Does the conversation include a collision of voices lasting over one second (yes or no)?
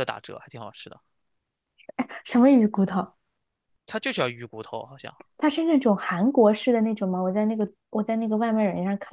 no